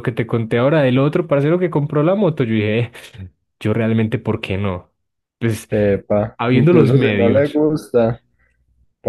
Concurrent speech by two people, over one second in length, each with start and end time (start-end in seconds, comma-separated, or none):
6.4-7.6